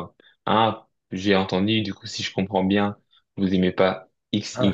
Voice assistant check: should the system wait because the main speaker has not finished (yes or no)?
yes